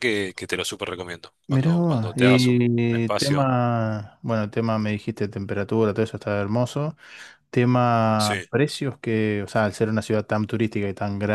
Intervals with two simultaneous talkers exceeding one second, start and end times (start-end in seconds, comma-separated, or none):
1.5-3.5